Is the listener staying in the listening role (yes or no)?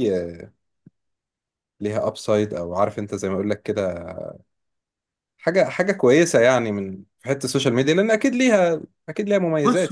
no